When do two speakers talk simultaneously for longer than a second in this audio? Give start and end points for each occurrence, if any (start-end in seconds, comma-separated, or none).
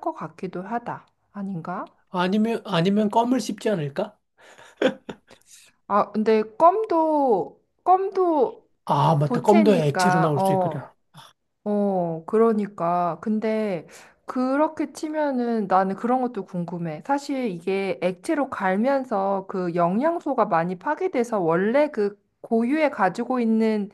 9.2-10.8